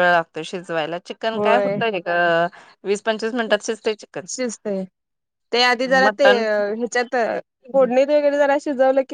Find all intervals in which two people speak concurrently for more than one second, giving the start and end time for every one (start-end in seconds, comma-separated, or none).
none